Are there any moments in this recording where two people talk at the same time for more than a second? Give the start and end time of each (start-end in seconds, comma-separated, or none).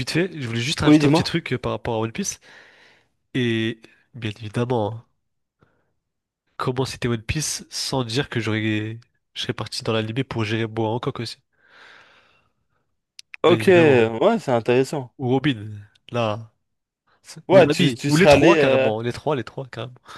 17.5-18.9